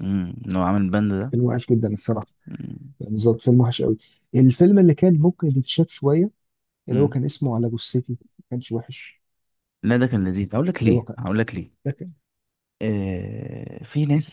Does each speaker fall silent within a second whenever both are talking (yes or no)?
yes